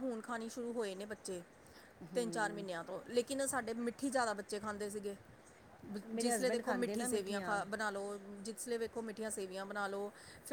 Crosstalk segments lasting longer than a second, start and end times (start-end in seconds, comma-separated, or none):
6.2-7.6